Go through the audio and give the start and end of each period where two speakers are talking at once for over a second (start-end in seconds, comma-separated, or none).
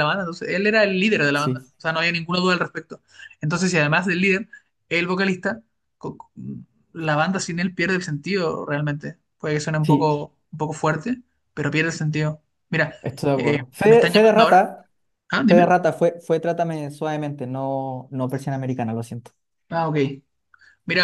13.3-14.6